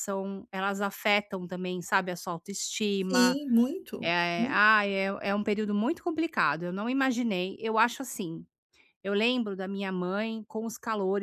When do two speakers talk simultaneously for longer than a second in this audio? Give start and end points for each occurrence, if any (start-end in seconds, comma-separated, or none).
none